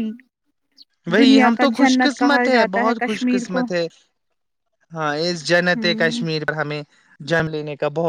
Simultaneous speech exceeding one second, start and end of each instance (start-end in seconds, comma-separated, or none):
1.2-3.6